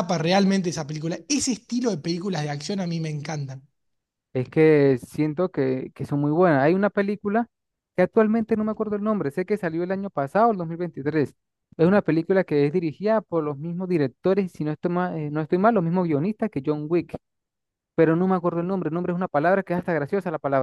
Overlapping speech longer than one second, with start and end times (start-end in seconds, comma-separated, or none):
none